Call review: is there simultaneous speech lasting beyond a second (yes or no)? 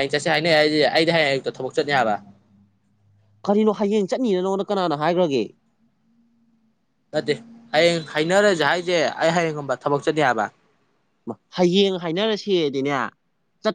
no